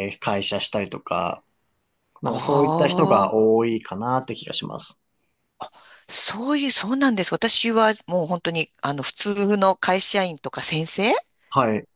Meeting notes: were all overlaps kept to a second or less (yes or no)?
no